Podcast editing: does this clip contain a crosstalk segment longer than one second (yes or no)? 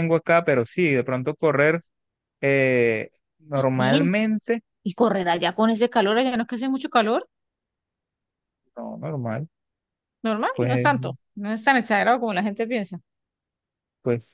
no